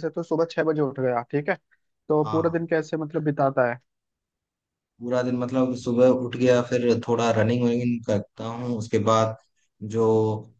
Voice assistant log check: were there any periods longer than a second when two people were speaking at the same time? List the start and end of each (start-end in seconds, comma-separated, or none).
none